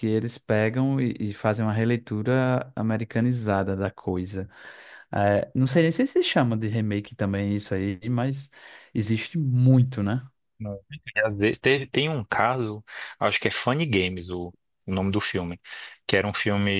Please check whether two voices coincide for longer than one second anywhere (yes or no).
no